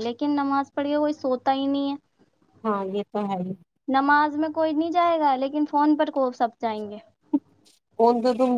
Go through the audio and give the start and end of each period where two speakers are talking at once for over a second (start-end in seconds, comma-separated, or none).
none